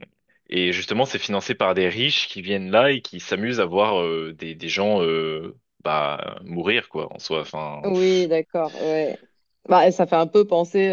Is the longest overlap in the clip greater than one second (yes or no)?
no